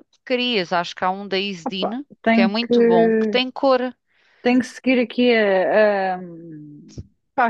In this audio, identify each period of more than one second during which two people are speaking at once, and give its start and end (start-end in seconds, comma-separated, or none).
1.6-3.4